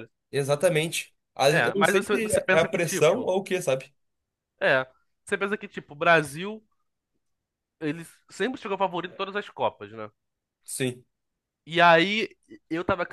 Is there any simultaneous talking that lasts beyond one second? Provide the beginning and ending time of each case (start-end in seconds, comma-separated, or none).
1.5-3.3